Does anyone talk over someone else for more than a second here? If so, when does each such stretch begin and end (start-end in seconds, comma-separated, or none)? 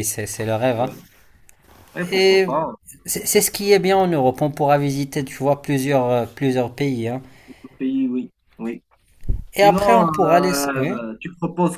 9.5-11.0